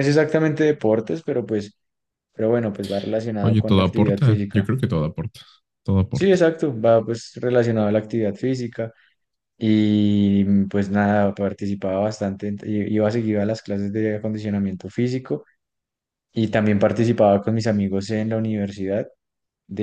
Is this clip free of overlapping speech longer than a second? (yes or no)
no